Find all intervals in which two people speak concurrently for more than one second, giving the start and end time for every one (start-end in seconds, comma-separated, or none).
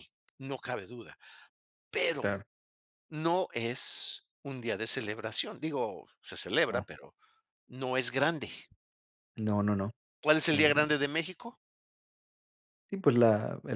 none